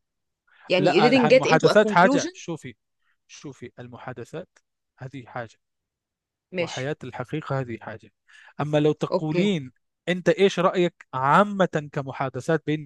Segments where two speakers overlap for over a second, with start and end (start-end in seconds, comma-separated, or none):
0.8-2.3